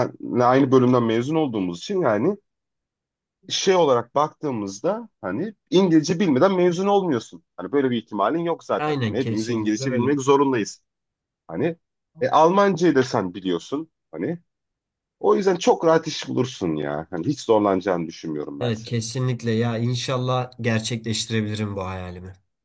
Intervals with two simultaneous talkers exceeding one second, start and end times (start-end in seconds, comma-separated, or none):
8.8-10.1